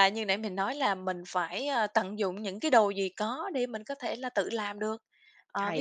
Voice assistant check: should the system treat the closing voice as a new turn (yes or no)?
no